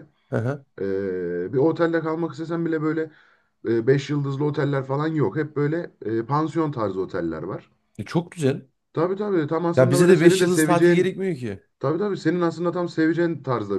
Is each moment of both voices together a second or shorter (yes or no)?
no